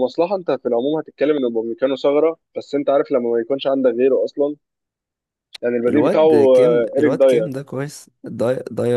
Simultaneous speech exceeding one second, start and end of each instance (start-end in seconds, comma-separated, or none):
5.9-7.6